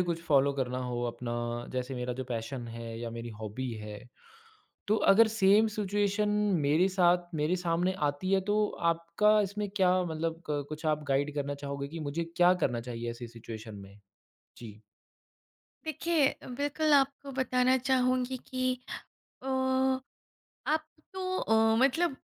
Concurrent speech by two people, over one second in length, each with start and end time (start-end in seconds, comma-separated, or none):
none